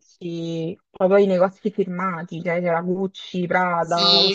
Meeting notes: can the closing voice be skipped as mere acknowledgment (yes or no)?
no